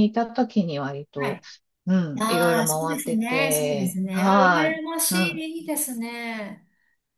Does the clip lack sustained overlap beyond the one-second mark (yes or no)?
no